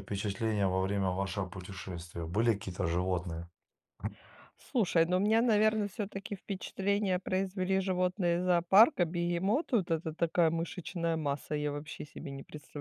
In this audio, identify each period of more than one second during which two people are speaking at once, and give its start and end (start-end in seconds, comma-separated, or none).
none